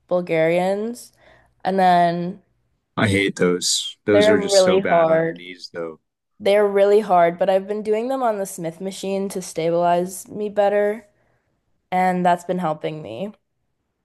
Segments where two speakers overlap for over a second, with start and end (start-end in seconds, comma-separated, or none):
4.1-5.4